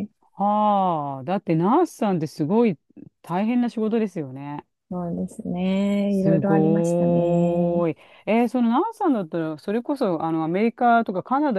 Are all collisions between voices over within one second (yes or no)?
no